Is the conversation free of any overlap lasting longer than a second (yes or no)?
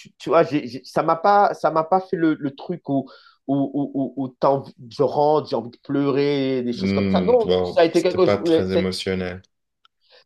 no